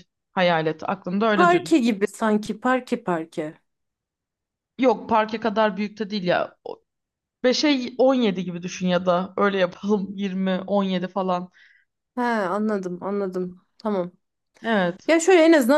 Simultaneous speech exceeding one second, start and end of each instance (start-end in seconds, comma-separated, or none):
none